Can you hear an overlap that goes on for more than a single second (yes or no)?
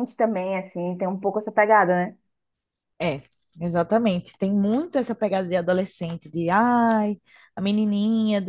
no